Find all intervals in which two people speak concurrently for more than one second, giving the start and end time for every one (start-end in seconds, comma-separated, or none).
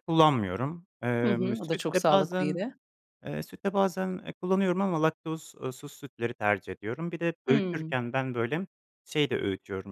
1.2-2.6